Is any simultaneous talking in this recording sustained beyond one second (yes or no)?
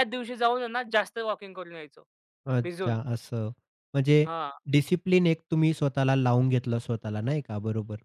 no